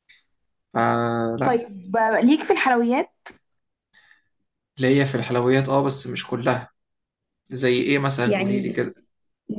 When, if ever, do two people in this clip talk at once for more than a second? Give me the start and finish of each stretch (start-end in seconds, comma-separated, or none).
none